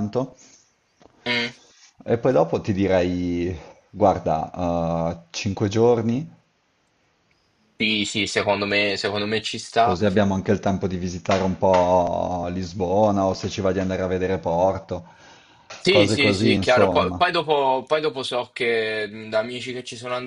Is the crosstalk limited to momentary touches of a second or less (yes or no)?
no